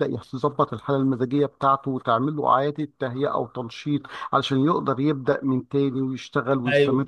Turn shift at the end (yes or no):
yes